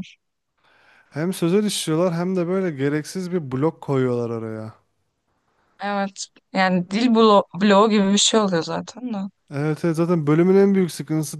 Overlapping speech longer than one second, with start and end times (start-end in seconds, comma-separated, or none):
none